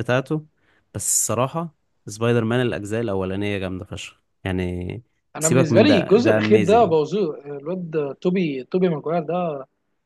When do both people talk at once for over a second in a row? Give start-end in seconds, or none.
5.4-7.0